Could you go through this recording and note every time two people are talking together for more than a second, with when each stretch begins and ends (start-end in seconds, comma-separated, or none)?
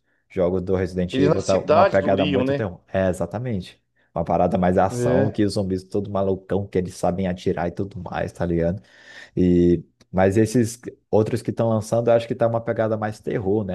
1.1-2.6